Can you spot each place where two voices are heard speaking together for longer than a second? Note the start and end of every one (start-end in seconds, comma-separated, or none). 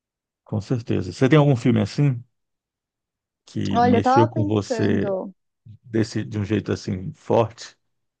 3.7-5.1